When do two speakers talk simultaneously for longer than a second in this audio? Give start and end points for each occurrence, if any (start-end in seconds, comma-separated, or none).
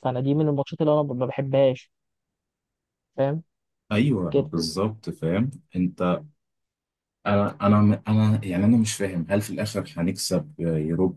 none